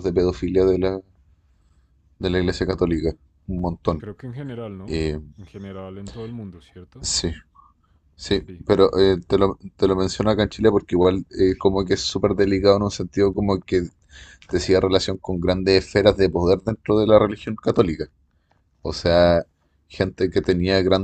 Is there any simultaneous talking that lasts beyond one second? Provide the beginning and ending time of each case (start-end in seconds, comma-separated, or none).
none